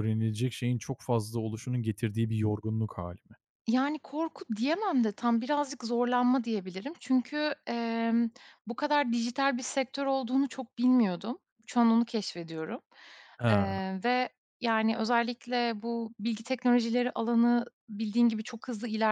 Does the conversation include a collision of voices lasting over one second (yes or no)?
no